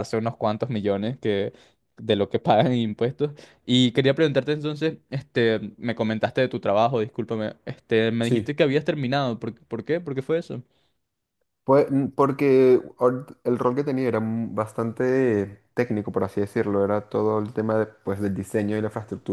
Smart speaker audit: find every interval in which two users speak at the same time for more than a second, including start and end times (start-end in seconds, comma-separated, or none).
none